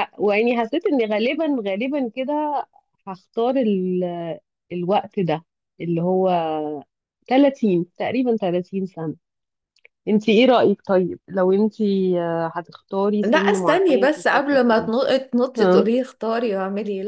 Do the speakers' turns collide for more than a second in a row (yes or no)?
yes